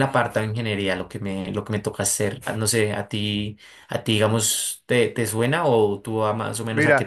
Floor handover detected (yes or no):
yes